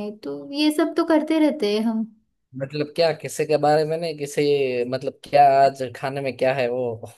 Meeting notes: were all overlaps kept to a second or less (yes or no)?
yes